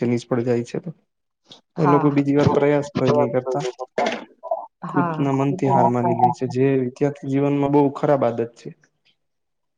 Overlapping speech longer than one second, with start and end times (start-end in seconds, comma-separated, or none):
4.9-6.4